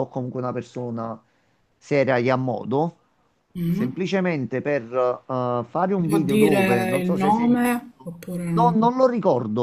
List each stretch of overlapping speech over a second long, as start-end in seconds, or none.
6.1-7.8